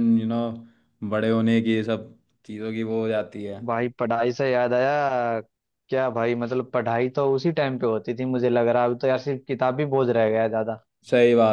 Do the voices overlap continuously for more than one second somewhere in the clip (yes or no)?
no